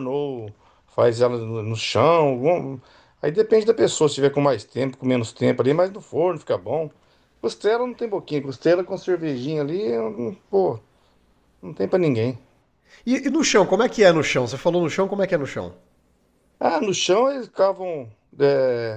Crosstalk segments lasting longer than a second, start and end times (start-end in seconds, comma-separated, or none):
none